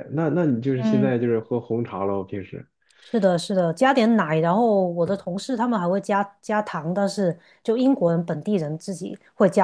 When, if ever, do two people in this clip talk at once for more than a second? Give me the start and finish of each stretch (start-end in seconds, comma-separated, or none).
none